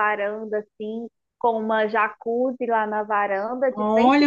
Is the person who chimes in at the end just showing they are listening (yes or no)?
no